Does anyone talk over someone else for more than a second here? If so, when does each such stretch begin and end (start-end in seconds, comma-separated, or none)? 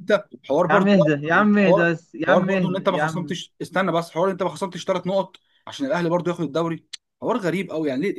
0.7-3.3